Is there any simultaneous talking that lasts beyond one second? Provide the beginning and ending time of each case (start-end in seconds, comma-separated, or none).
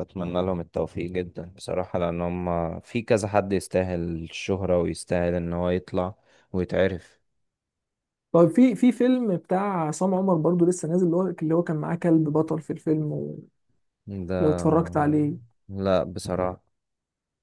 none